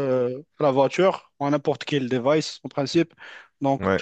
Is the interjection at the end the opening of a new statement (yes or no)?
no